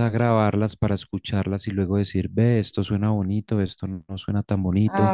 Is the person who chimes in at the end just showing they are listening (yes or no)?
yes